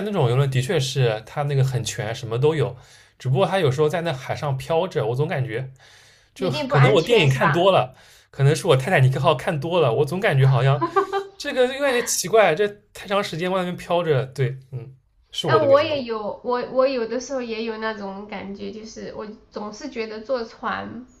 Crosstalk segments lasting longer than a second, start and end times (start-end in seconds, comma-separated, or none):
6.4-7.7